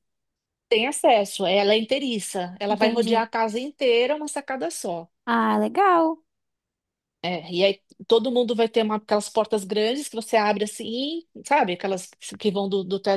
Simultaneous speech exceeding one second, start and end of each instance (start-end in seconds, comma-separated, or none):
none